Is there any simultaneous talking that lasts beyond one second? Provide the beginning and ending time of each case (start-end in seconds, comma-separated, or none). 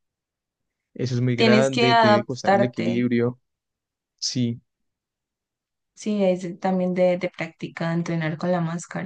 1.4-3.1